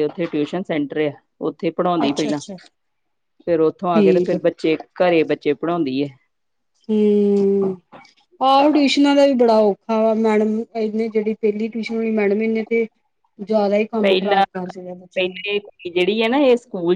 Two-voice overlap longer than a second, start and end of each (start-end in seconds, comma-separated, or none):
14.0-15.4